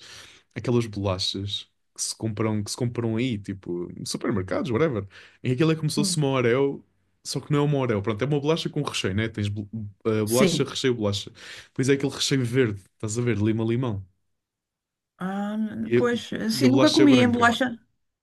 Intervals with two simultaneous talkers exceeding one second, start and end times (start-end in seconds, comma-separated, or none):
16.0-17.6